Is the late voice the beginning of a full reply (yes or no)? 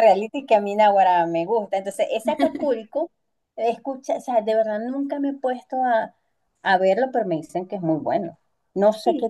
no